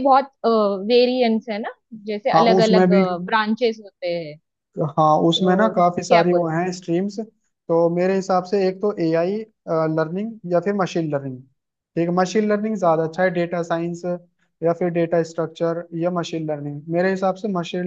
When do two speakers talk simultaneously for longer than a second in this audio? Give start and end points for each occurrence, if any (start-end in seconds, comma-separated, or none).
5.0-6.7